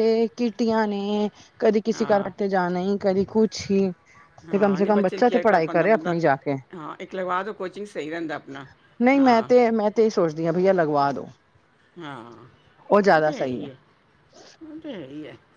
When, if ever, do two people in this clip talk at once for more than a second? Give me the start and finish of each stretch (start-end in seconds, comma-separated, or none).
4.5-6.1